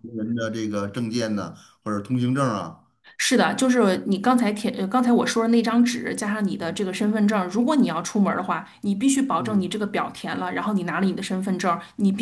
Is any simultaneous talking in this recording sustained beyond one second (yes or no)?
no